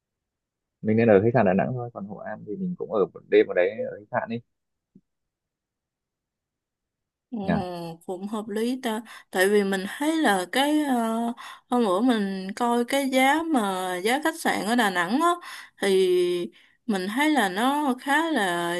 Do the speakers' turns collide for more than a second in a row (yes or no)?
no